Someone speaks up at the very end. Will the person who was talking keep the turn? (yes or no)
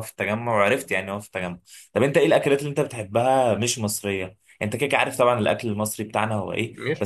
yes